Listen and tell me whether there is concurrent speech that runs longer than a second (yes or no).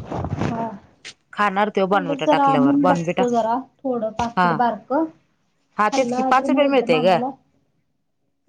yes